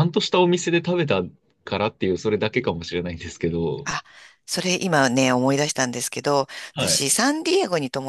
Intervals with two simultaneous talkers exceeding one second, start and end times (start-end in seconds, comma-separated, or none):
none